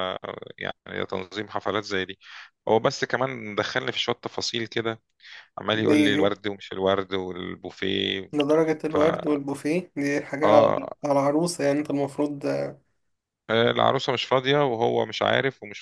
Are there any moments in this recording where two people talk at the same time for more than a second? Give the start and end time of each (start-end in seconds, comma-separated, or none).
none